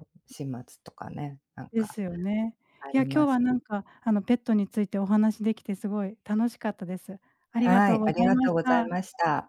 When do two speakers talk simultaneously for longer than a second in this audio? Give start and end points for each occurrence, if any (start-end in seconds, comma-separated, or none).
7.6-8.9